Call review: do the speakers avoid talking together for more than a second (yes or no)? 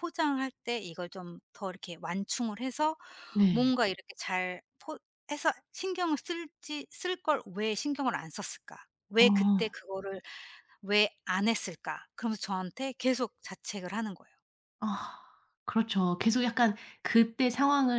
yes